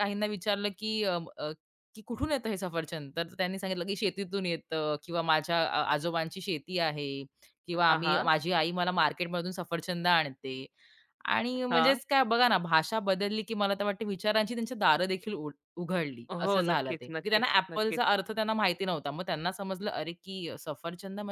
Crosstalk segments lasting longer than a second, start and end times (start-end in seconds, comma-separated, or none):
16.4-18.0